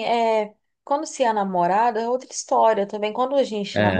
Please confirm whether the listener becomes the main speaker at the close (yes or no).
no